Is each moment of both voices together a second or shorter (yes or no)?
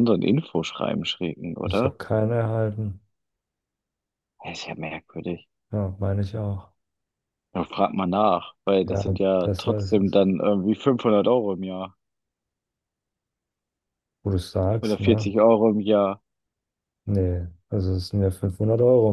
no